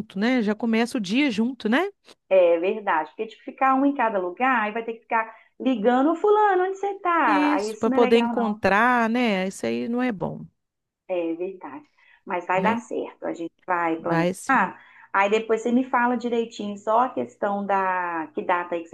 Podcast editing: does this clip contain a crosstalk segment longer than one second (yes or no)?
yes